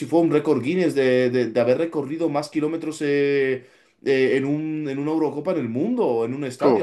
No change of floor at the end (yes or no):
yes